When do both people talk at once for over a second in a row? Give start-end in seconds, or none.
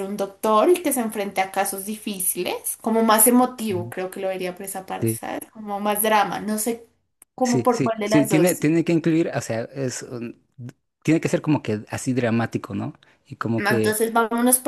7.4-8.6